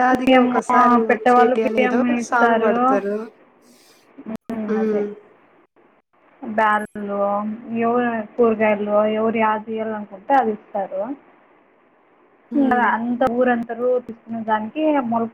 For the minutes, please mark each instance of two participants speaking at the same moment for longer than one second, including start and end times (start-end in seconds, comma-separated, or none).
1.1-2.7